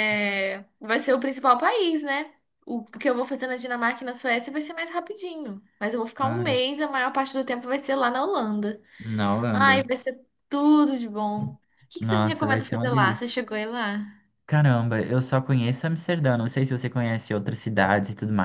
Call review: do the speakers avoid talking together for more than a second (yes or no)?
no